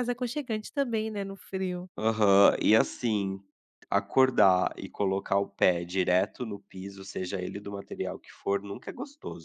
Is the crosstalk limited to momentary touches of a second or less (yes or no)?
yes